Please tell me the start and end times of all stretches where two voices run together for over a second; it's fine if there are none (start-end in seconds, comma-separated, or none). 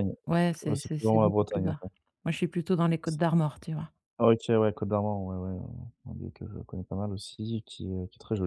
0.6-1.8